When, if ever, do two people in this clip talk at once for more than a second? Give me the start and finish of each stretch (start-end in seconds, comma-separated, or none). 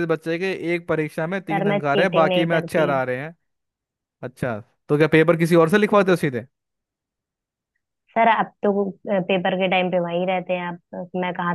1.5-2.9